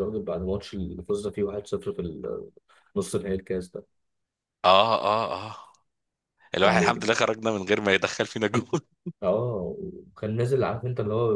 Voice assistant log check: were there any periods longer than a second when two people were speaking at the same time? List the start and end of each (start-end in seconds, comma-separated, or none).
none